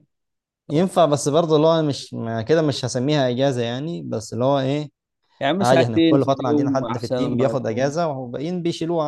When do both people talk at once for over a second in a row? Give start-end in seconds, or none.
5.6-7.9